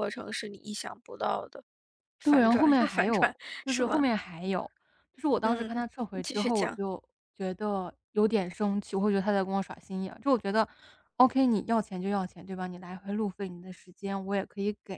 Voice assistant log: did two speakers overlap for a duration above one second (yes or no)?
yes